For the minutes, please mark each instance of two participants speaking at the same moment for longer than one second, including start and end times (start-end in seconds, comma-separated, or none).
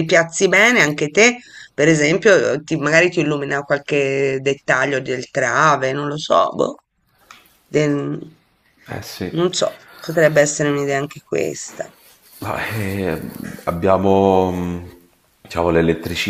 none